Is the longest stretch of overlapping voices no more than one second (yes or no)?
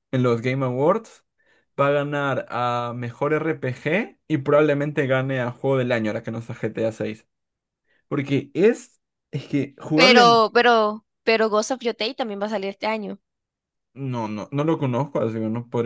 yes